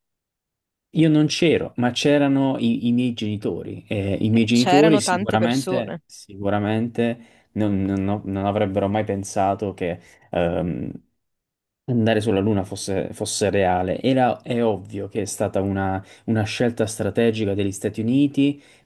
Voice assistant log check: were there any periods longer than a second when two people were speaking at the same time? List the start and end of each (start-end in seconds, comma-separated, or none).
4.3-6.0